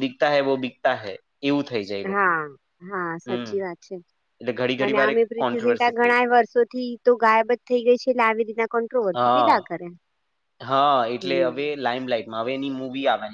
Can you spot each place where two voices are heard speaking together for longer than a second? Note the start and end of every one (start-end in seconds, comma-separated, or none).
4.8-6.4